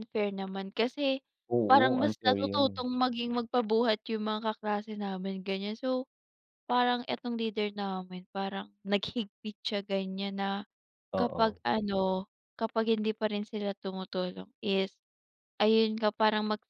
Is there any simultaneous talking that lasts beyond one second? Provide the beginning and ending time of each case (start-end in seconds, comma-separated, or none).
1.7-2.9